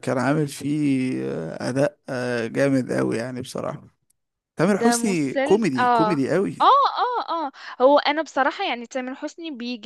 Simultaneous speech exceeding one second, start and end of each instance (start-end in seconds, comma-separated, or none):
4.7-6.1